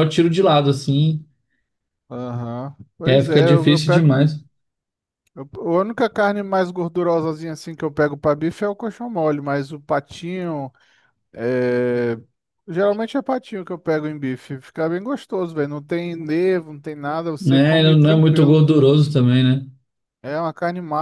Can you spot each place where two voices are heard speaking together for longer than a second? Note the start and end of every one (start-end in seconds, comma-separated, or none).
3.0-4.2, 17.4-18.6